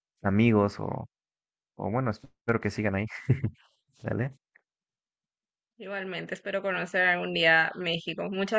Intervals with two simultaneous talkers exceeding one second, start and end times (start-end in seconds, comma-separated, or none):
none